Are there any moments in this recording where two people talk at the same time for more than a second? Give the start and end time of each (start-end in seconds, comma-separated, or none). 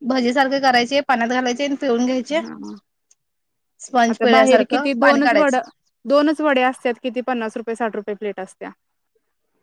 4.1-5.6